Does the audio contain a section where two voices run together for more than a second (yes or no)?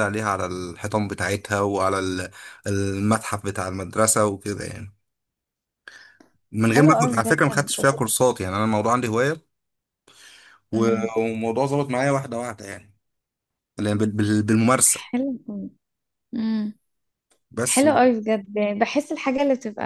yes